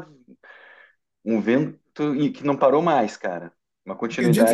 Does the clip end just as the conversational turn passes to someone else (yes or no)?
yes